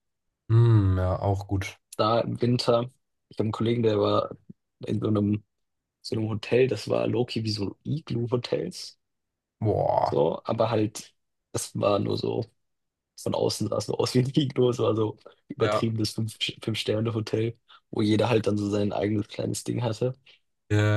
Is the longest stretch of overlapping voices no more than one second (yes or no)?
yes